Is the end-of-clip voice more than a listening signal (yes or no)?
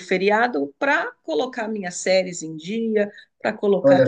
no